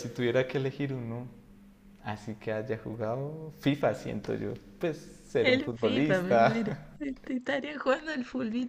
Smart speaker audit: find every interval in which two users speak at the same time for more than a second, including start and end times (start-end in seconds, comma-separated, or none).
5.4-7.0